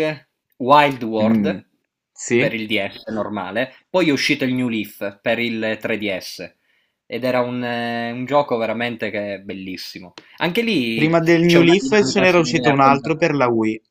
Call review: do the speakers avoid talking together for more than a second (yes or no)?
no